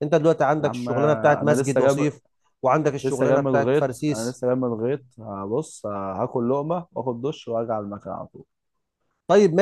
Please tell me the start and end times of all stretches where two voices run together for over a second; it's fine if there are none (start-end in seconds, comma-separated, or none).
0.6-2.1, 3.0-4.4